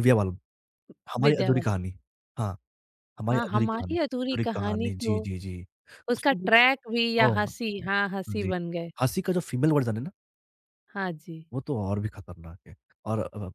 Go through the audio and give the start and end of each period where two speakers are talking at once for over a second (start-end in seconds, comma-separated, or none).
3.3-5.2